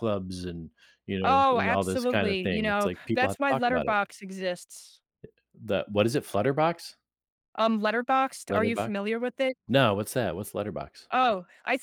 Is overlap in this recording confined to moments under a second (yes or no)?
no